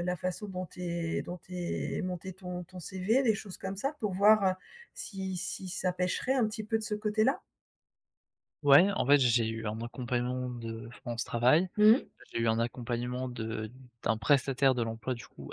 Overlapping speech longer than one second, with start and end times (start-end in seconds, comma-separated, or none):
none